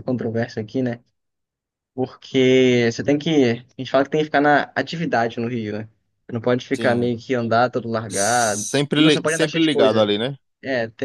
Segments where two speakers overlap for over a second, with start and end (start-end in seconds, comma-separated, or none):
8.1-10.1